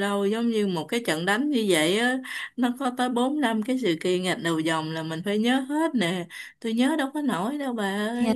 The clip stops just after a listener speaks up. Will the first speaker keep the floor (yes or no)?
no